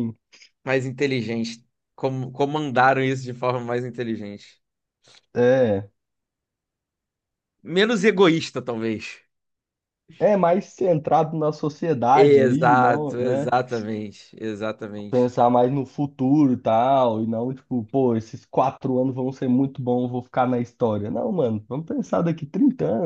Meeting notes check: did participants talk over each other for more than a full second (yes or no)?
yes